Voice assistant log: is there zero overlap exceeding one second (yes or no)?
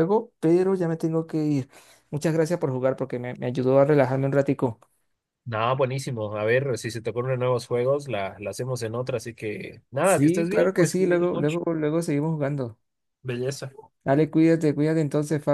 no